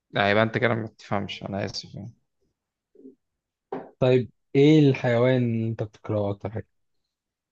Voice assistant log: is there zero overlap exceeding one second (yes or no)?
yes